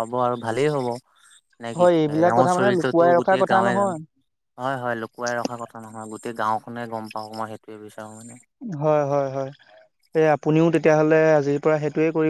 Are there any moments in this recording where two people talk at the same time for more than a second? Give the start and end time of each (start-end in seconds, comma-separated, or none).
1.8-4.0